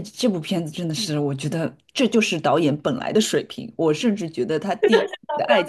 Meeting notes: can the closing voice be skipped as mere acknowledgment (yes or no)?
yes